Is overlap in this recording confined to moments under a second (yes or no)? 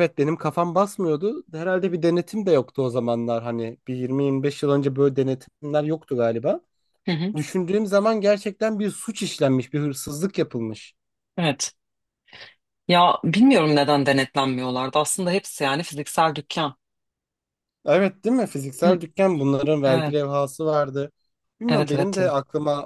yes